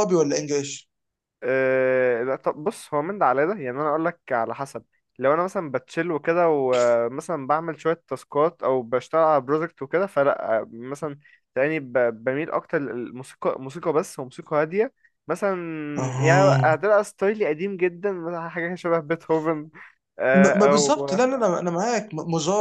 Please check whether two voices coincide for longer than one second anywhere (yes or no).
no